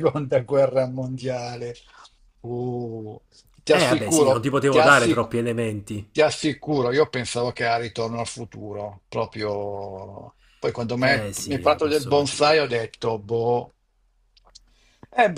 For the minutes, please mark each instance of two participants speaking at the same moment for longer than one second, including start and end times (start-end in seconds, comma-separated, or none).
3.7-5.3, 11.0-12.7